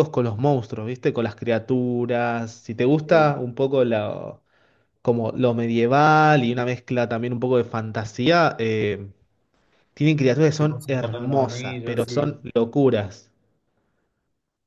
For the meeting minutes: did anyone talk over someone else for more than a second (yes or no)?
yes